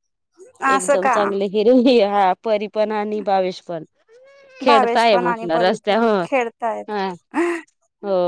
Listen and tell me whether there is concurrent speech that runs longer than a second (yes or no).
yes